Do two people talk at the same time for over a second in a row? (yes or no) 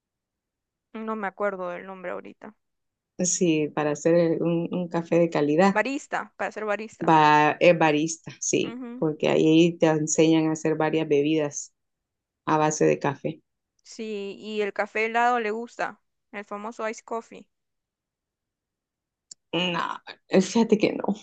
no